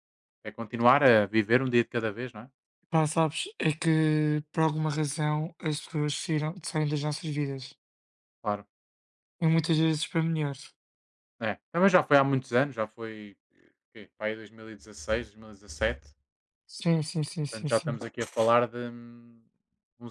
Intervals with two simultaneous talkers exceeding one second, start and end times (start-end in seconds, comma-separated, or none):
none